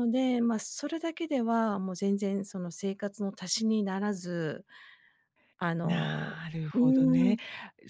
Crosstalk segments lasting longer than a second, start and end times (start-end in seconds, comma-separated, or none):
5.8-7.4